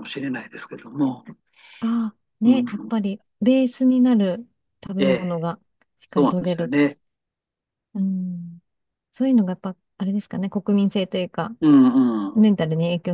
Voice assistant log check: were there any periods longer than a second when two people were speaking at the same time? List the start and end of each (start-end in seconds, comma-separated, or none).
none